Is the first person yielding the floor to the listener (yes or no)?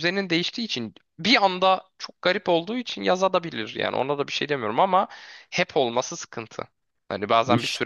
no